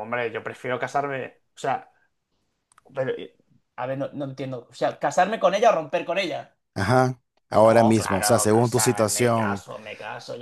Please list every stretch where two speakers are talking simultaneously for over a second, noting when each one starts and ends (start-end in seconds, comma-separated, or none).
7.6-9.6